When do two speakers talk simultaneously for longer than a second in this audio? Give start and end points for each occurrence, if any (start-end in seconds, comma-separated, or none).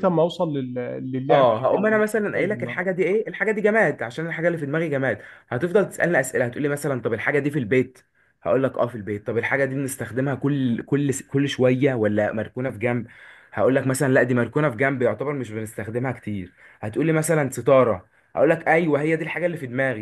1.3-2.8